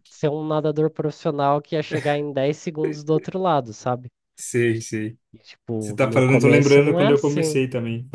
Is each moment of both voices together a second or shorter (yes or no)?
no